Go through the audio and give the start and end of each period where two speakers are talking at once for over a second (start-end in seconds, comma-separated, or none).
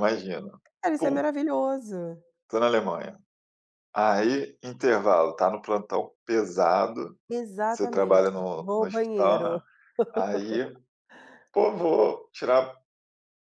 7.7-9.6